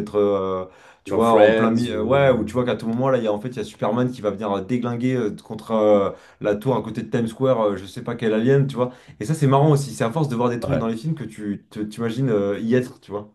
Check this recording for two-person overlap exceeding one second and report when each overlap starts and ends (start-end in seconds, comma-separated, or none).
1.1-2.5